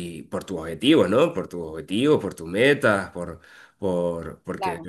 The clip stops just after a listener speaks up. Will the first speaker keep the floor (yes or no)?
yes